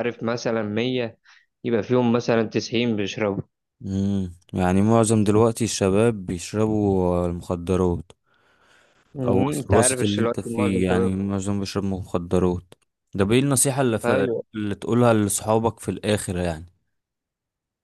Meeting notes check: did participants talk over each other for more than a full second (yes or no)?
yes